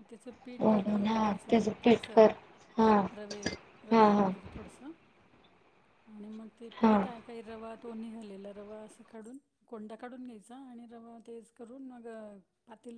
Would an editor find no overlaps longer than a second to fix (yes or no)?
no